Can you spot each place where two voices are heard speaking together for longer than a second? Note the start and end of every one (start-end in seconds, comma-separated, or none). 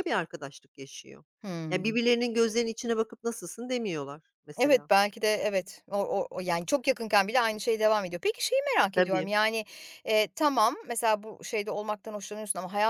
none